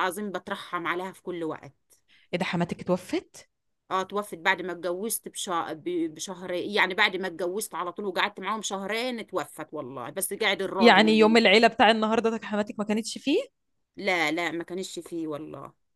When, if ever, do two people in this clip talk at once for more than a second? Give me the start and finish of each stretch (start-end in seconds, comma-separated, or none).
none